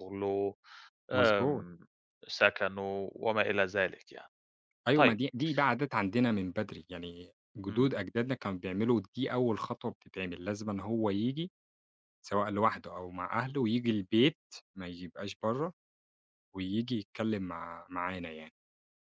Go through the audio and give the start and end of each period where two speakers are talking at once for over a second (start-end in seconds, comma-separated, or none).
none